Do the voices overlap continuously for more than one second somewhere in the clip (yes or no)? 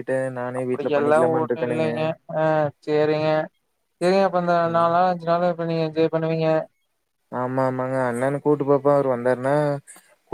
yes